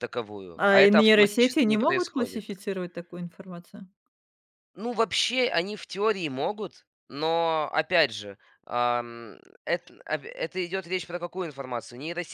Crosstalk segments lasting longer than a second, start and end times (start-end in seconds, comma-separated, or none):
0.7-2.4